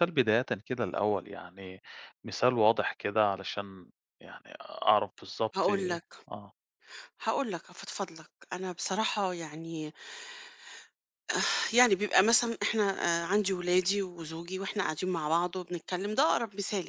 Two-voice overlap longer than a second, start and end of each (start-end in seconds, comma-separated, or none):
none